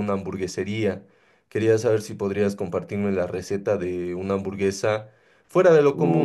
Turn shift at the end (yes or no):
no